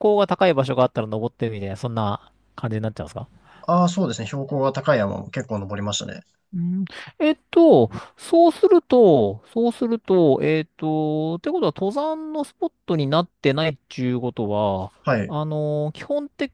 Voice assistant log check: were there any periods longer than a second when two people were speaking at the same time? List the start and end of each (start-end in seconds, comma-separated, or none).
none